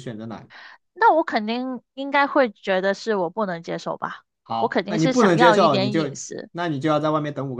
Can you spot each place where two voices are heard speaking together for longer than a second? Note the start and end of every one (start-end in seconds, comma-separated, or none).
4.4-6.5